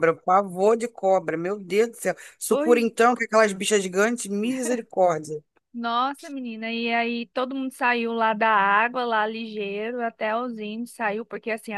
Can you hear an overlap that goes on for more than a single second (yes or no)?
no